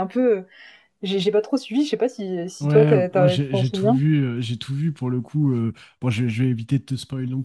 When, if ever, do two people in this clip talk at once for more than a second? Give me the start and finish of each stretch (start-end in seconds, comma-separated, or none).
2.6-4.0